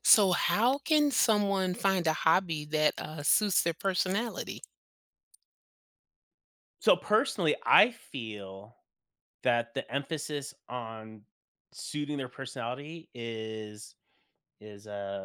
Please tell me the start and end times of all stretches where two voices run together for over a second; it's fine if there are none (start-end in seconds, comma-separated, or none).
none